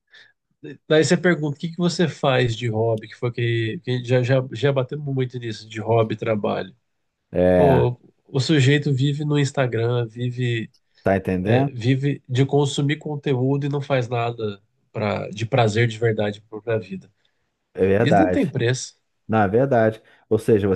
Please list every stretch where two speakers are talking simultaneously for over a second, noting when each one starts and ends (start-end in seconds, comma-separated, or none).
none